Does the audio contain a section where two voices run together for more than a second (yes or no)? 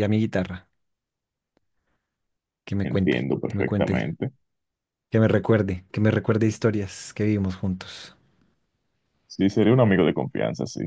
yes